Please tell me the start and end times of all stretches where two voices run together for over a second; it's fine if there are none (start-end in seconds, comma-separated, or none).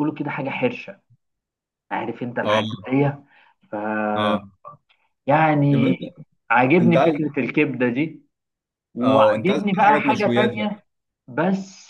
9.0-10.8